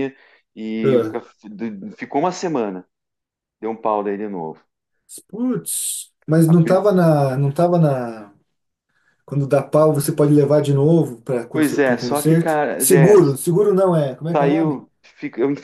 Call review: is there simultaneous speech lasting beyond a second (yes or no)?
yes